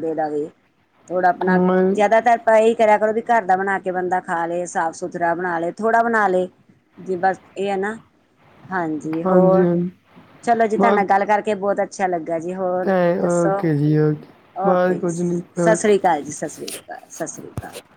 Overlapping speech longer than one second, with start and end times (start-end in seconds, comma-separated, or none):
14.7-15.9